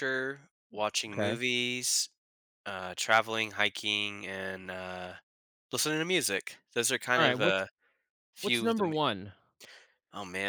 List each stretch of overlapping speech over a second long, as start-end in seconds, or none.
none